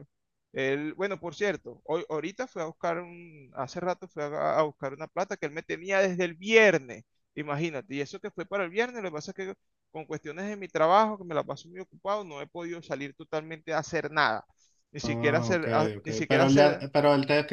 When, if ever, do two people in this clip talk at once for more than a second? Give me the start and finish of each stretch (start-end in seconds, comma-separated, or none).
15.0-16.9